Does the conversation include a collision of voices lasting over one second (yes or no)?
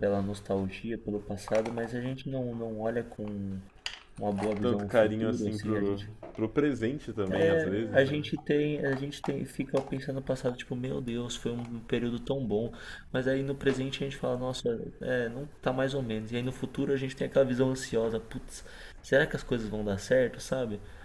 yes